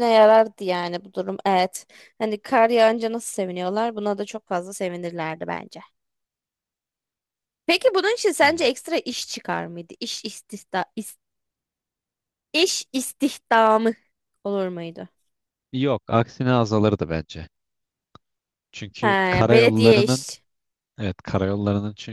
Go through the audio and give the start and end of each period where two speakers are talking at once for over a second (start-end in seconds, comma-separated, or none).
19.0-20.3